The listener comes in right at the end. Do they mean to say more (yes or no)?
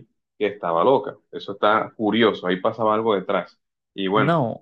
yes